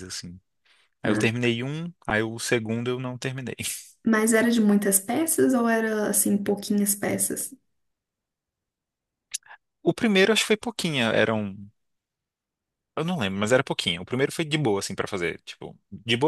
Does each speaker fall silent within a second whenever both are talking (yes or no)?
yes